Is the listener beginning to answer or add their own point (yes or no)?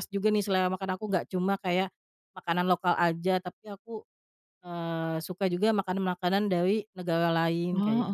yes